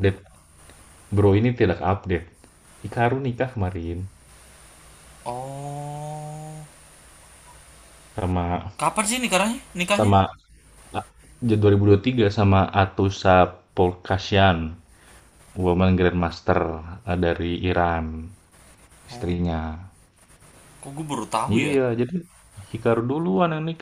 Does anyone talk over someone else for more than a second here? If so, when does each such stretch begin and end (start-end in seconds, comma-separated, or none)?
none